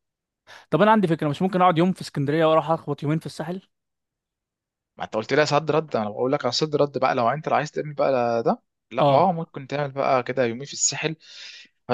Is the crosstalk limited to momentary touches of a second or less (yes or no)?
yes